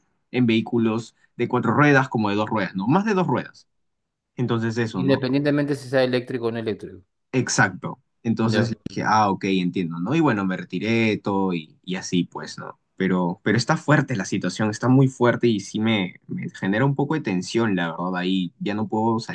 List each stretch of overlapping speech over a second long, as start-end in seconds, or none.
none